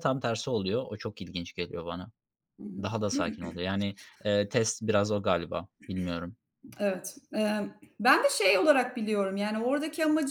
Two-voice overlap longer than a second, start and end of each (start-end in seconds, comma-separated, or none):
none